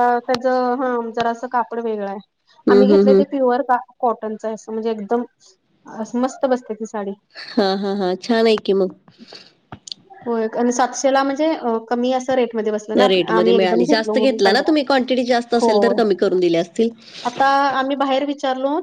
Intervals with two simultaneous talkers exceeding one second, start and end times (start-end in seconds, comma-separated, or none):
13.1-14.7